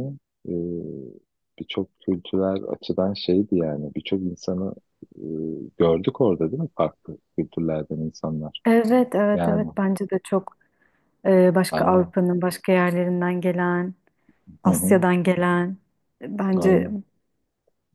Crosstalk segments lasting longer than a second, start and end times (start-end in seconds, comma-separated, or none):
none